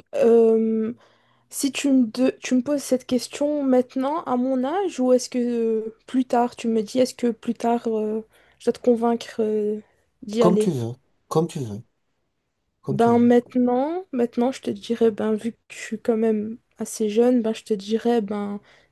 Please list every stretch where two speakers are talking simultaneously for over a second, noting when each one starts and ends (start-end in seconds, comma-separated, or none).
none